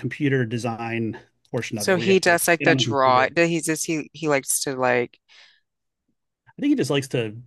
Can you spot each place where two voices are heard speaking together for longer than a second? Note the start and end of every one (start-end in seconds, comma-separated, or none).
1.8-3.3